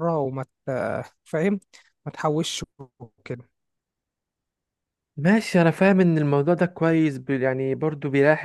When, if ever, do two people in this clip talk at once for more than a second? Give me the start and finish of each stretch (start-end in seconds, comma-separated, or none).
none